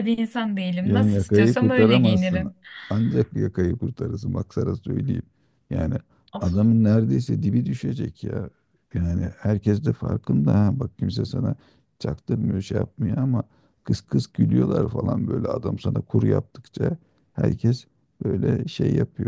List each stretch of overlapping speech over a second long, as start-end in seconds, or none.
0.8-2.5